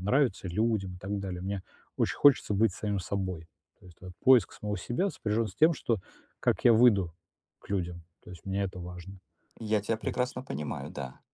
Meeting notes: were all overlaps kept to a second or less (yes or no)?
yes